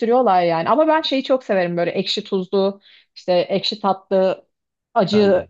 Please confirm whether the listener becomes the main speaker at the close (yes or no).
no